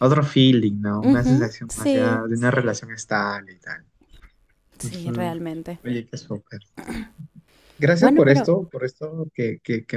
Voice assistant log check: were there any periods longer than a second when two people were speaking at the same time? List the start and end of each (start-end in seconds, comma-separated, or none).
1.0-2.2